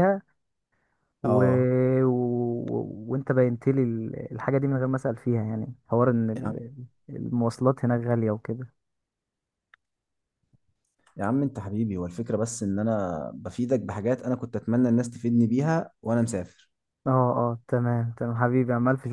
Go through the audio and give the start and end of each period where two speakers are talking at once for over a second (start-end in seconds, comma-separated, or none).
none